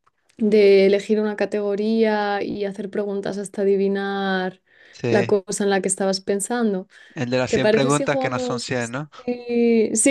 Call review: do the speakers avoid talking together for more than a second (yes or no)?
no